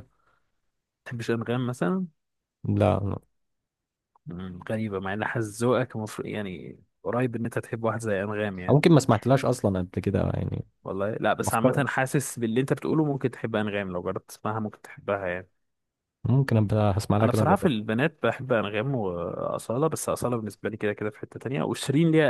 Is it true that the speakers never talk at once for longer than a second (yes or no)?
yes